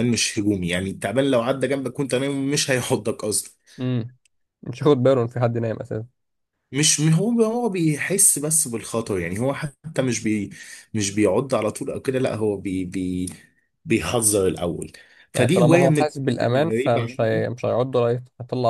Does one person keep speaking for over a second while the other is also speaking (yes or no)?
yes